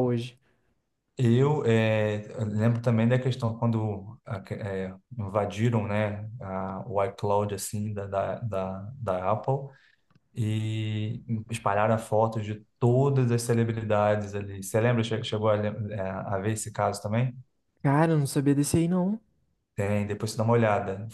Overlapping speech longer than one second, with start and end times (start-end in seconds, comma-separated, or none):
none